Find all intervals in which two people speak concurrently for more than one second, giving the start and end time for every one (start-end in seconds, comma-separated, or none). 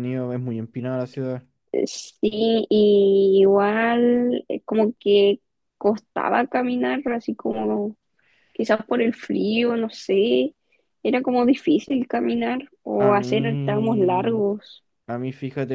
13.0-14.4